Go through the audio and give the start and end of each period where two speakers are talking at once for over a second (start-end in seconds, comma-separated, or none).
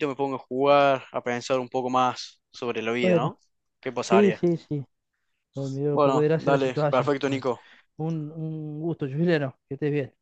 5.9-7.4